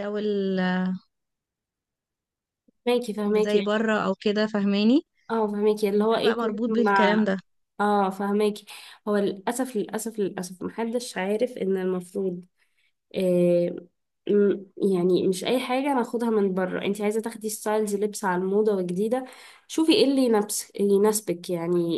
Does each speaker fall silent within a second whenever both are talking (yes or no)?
no